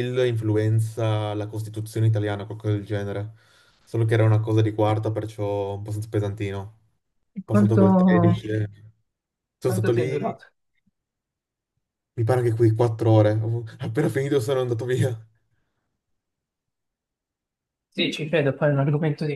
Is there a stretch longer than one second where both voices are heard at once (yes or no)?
no